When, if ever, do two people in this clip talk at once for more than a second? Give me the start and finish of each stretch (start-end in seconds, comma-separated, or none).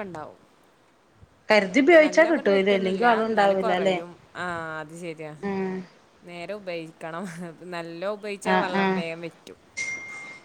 2.0-4.0